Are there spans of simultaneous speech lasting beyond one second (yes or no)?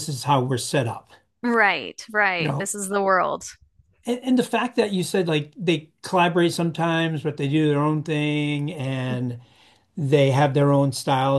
no